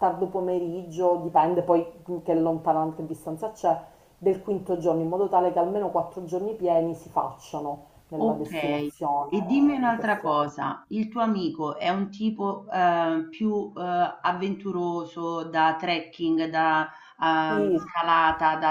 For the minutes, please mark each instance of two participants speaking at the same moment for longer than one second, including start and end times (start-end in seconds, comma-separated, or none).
9.3-10.5